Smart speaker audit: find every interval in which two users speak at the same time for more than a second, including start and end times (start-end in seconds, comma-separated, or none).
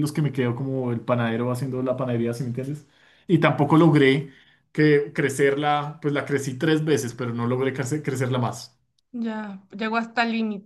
none